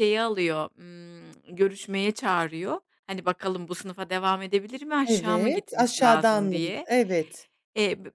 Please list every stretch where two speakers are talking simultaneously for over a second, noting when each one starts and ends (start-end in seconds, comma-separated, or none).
5.0-6.9